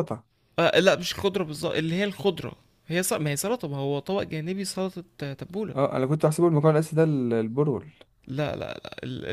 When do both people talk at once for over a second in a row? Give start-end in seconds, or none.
none